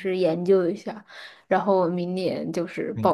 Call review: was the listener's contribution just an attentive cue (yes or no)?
no